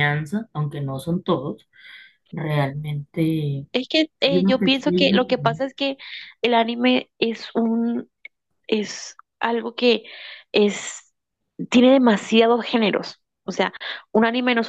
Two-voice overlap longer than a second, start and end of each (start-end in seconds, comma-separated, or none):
4.3-5.6